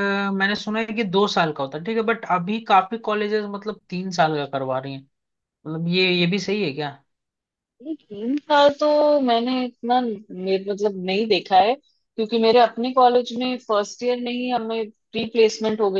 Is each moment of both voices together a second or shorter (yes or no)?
yes